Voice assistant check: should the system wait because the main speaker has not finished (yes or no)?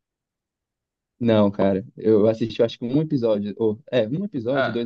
no